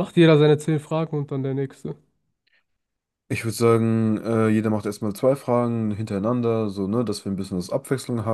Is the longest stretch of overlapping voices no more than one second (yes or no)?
yes